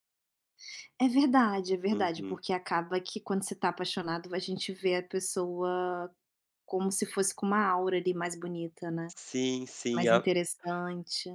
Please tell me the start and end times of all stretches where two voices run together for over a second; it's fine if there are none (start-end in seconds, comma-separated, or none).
none